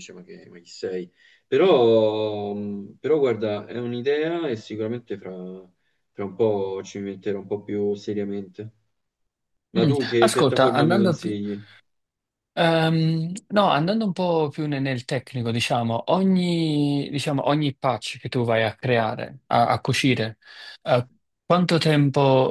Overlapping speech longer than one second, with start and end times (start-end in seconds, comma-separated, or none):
9.8-11.4